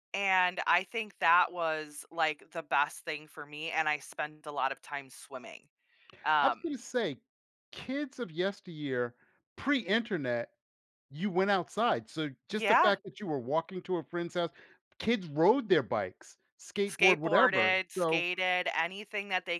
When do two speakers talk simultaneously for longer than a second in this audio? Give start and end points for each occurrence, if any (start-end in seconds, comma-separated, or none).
16.9-18.3